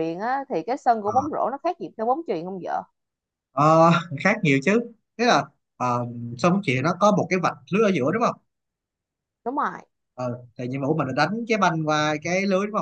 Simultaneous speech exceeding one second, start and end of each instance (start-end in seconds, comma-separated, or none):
none